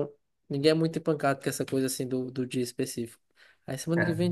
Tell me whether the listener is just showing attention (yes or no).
yes